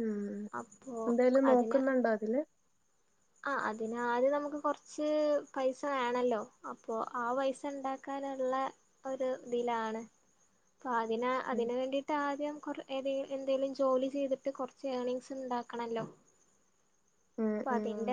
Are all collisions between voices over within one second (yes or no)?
yes